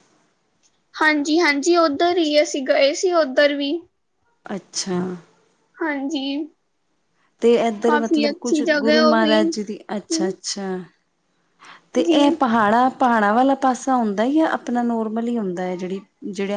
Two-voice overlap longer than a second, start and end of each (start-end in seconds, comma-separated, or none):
7.9-9.5